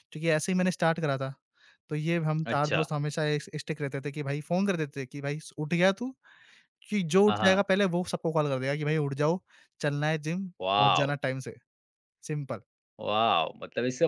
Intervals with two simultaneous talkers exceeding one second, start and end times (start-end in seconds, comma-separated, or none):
none